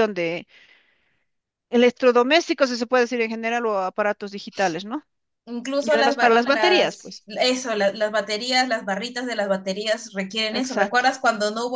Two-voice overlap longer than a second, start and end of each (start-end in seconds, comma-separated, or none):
5.8-7.2